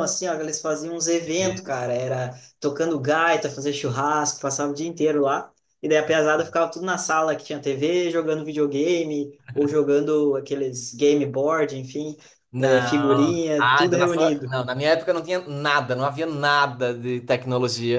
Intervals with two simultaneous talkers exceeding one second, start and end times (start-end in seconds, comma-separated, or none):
12.6-14.6